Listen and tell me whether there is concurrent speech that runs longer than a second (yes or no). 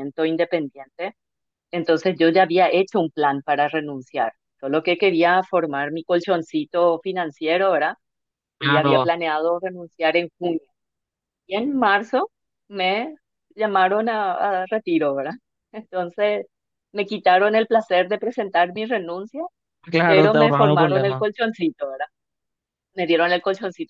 yes